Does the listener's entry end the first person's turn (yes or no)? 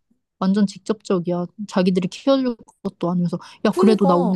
no